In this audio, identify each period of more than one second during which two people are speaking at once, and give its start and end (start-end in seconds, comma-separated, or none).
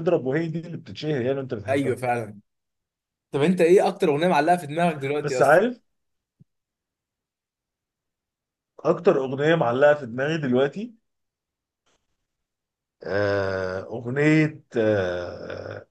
none